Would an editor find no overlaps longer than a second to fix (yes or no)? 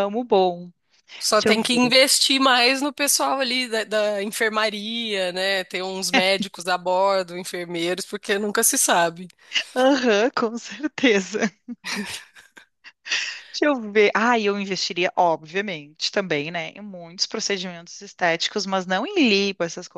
yes